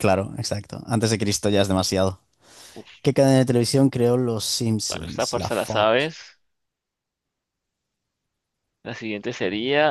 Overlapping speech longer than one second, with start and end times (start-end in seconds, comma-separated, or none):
4.9-6.1